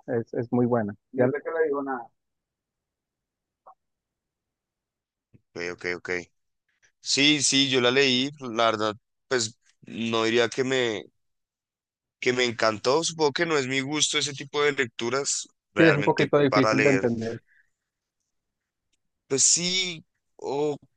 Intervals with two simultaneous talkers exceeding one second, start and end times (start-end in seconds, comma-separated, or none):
15.8-17.1